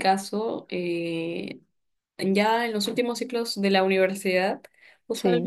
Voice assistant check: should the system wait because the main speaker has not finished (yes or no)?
yes